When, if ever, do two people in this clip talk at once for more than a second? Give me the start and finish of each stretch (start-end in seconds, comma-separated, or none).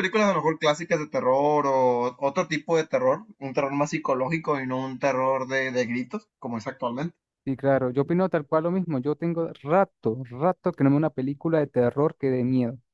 none